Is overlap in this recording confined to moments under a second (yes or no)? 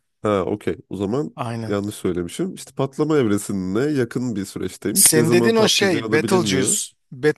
no